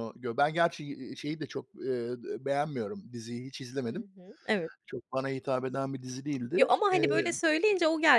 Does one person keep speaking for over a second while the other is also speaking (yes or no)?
no